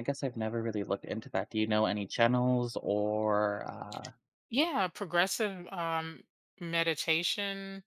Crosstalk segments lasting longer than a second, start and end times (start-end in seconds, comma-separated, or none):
none